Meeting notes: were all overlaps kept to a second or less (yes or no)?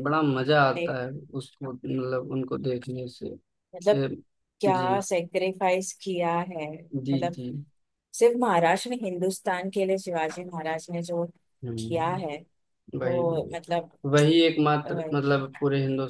yes